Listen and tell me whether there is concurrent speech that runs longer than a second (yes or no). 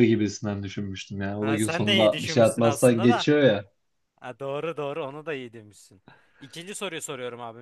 yes